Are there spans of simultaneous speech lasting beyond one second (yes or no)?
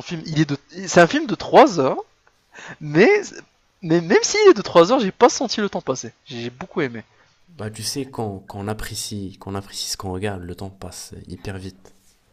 no